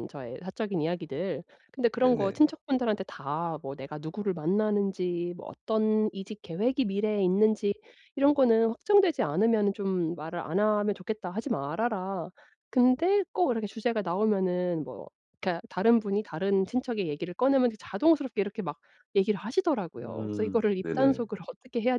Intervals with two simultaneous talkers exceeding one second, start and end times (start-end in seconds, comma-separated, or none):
20.0-21.3